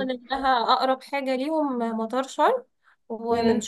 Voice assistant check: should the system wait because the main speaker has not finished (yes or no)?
yes